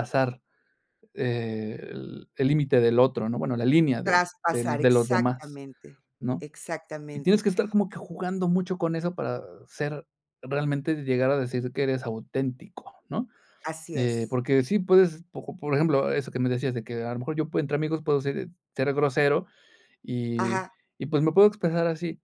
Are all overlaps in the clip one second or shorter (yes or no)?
no